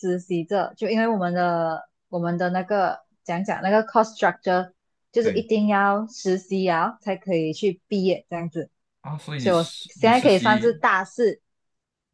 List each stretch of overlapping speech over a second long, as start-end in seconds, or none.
9.4-10.8